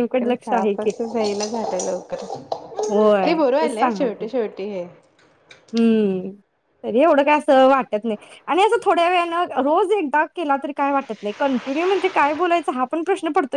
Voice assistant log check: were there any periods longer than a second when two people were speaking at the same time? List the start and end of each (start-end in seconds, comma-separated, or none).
2.9-4.3